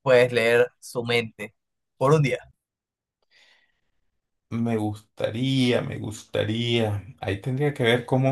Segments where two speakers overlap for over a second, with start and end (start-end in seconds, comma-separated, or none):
none